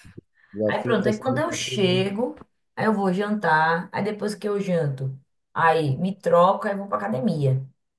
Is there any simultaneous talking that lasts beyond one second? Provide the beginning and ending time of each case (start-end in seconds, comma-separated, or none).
0.7-2.0